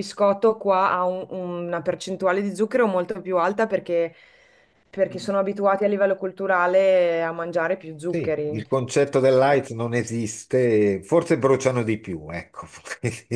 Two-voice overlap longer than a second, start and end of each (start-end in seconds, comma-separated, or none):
none